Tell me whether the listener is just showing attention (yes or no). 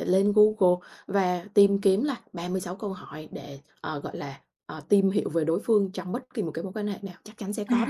no